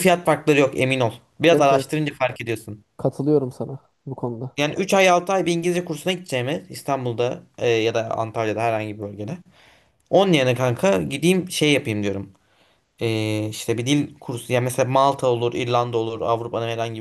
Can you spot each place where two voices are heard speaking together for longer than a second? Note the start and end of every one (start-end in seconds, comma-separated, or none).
none